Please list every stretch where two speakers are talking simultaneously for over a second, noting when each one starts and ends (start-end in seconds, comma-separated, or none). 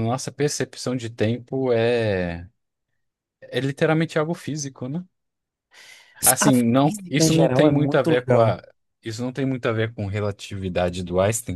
6.2-8.6